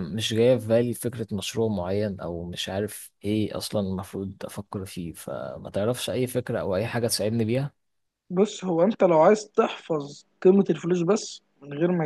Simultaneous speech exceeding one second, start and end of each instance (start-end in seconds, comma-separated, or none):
none